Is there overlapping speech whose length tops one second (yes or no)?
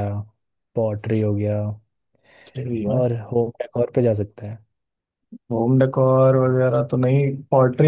no